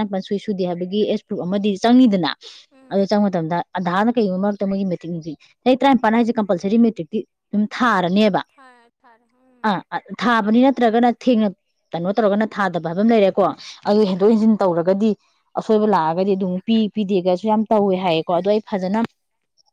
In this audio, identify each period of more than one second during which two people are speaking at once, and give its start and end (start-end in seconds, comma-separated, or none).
none